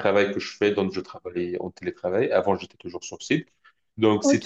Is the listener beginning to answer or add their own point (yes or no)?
no